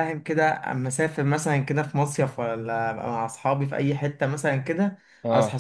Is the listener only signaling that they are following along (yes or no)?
yes